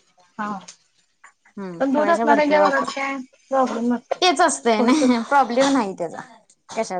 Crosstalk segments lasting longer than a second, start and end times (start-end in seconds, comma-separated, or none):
1.8-3.0